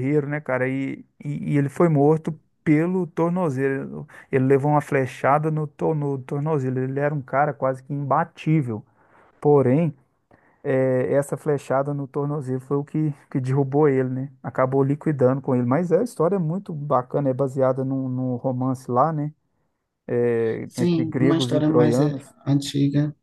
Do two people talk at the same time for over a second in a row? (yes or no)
yes